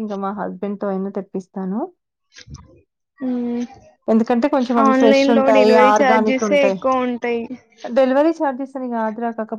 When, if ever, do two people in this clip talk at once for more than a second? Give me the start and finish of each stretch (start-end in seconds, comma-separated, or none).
4.9-6.8